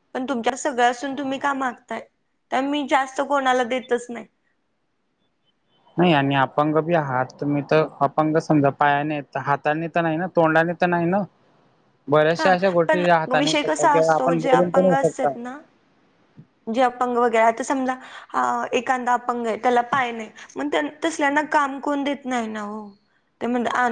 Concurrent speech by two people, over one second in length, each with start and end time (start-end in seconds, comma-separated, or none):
12.4-15.3